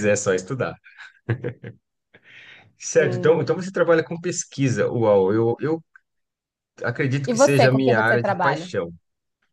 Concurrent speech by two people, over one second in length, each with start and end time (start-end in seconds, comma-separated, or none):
7.2-8.7